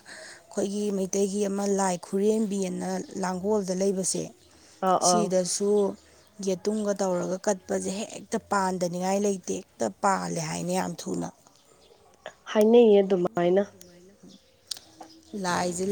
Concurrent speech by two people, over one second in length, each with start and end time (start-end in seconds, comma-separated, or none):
none